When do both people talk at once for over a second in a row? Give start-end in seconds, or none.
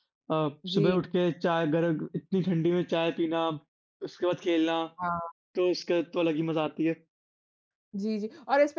none